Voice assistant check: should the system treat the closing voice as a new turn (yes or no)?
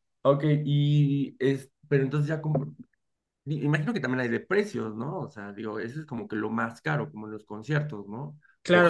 yes